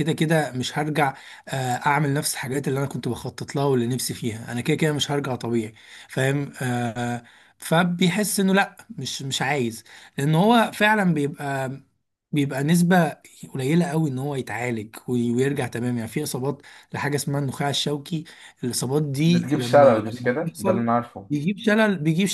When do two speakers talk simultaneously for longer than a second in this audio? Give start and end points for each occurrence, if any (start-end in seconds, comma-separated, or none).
19.2-20.9